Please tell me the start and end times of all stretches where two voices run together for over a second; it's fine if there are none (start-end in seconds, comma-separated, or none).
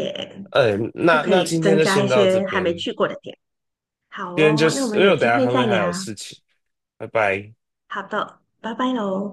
1.1-2.9, 4.3-5.8